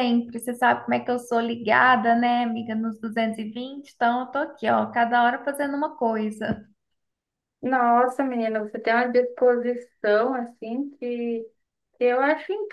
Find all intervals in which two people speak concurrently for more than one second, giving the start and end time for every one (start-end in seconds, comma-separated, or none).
none